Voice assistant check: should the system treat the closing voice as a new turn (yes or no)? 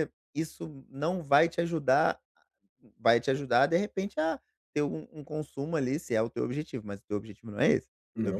no